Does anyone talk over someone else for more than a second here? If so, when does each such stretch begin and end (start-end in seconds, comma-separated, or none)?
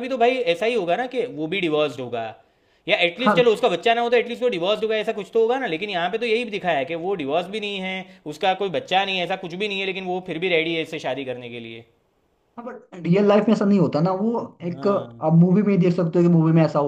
none